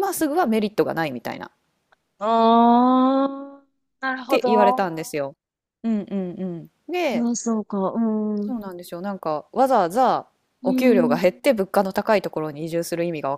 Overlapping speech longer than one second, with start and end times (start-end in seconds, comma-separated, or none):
none